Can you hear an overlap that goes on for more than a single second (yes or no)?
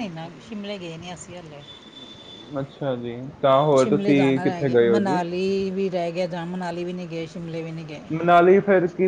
yes